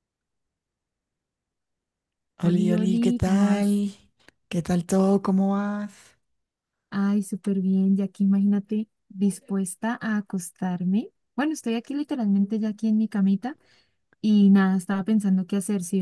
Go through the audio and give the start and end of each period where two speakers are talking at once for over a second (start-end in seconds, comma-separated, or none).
2.4-3.8